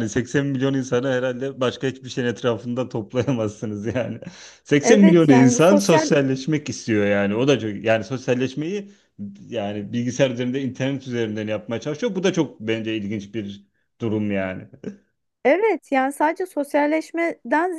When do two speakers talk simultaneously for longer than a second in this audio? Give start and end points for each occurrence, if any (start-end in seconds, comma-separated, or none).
4.8-6.1